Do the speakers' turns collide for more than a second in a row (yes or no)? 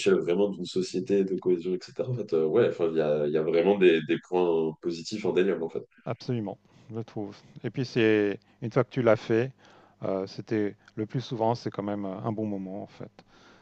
no